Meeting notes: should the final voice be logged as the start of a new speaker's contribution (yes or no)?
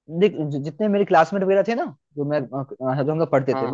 no